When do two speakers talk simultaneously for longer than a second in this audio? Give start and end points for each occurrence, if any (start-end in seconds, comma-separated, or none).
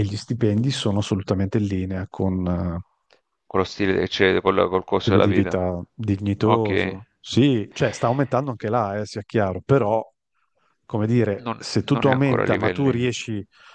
11.4-13.1